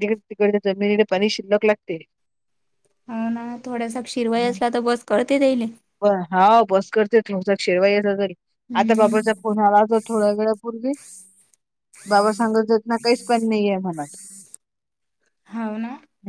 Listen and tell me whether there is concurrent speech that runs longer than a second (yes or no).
no